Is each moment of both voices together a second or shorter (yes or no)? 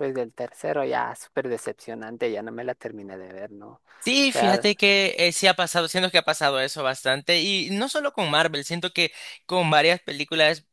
yes